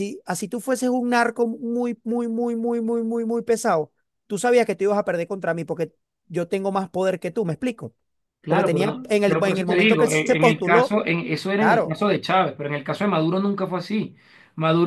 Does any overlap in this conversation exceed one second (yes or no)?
yes